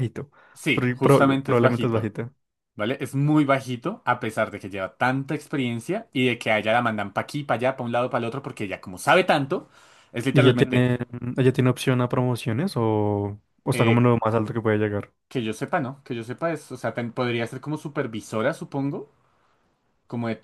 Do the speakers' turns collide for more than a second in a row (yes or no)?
yes